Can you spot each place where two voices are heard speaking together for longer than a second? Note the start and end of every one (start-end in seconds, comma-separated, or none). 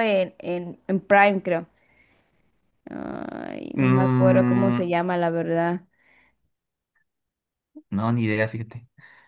3.7-5.0